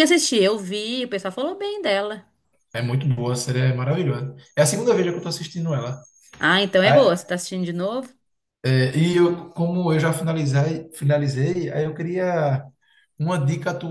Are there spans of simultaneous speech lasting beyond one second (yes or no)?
no